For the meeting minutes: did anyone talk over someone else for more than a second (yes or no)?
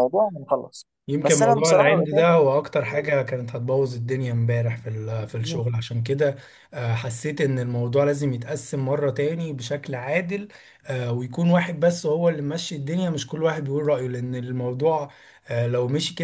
yes